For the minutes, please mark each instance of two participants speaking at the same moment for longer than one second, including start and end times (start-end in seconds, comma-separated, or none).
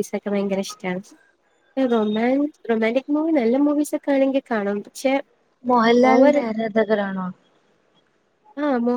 none